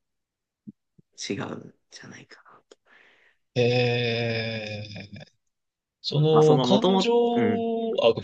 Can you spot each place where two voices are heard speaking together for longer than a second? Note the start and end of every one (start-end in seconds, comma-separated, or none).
6.3-7.6